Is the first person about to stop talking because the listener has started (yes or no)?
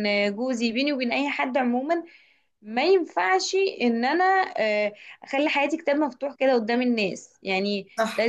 no